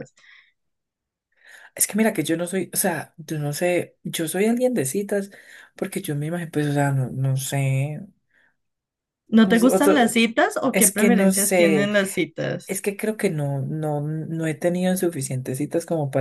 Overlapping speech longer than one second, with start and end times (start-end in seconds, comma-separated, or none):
10.7-11.9